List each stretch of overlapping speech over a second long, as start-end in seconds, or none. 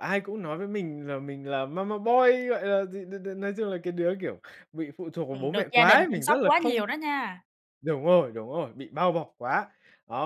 5.3-6.8